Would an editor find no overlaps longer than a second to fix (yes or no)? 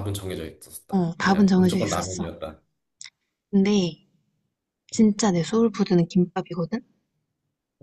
no